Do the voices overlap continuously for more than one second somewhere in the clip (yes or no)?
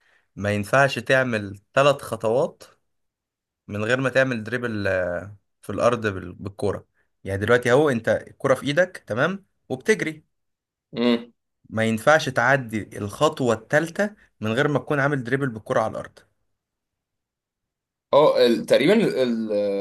no